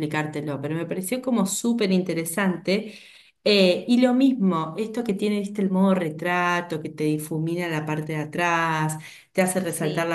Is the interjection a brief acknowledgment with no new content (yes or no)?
yes